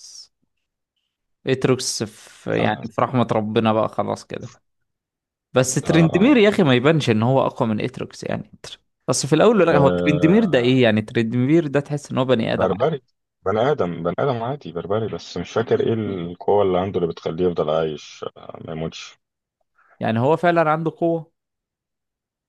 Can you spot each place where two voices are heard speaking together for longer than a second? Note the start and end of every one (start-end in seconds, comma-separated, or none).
9.7-10.9